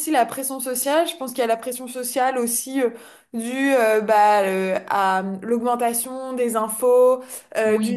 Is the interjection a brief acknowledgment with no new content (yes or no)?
yes